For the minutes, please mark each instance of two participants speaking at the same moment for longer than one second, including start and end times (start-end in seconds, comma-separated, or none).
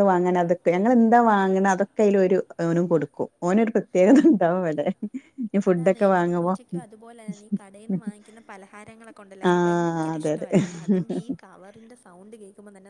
9.5-11.0